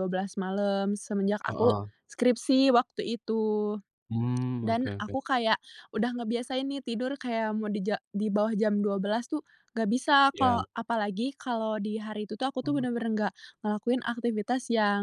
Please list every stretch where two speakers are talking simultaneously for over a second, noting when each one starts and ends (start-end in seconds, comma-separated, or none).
none